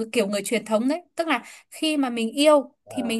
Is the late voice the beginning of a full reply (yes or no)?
no